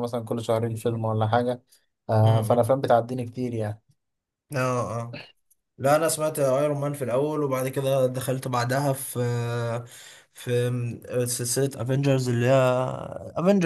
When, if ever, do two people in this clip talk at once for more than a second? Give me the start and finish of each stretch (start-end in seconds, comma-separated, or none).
none